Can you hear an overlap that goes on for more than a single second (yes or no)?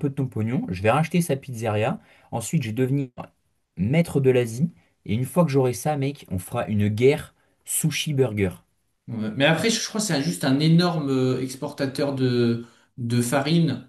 no